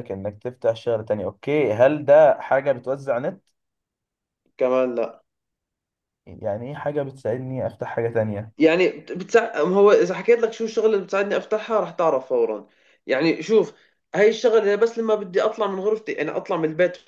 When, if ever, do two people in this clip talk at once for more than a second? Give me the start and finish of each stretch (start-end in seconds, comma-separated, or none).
none